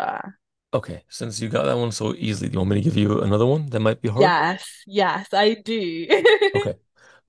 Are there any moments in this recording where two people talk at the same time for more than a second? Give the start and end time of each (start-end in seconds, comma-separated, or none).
none